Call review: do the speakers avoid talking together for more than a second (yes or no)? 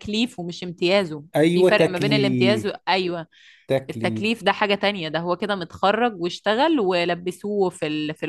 no